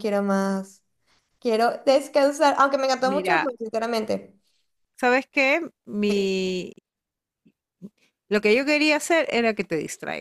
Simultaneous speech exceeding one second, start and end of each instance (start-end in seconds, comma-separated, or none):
none